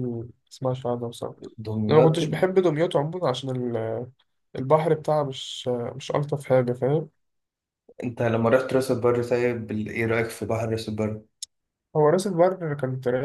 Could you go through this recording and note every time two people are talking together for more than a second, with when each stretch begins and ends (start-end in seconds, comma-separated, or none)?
none